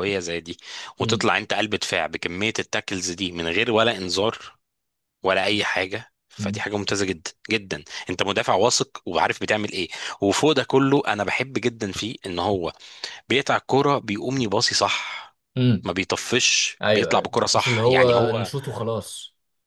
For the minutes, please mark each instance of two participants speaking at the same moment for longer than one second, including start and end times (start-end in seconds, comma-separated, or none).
16.8-18.5